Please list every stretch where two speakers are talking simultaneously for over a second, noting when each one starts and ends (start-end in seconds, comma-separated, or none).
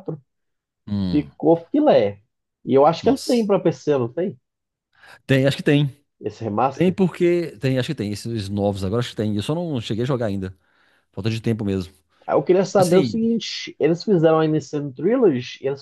none